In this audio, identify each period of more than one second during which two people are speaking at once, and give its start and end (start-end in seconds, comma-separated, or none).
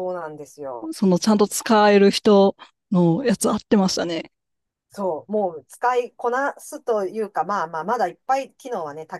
none